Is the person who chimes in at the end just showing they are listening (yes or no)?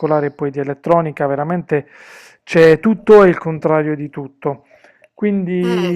yes